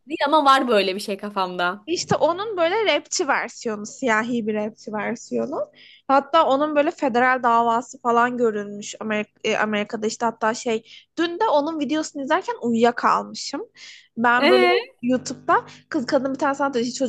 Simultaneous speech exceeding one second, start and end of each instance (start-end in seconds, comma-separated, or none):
none